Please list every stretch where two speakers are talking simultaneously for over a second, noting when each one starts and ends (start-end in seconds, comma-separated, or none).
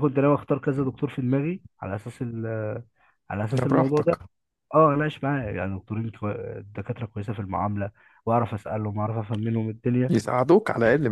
none